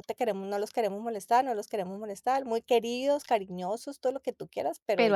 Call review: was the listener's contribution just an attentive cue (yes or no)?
yes